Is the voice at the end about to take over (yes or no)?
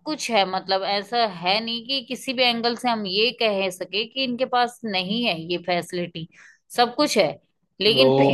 yes